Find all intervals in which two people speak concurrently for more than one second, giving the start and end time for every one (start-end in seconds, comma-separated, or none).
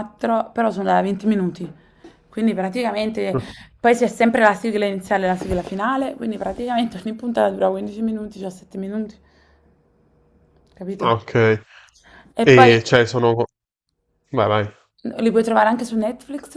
none